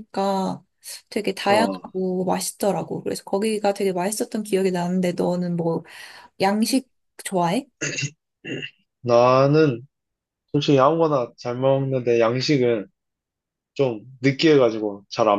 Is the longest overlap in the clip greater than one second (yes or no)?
no